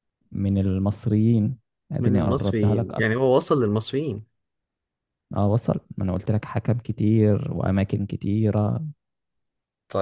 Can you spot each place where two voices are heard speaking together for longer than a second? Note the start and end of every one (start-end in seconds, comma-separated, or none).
2.0-3.3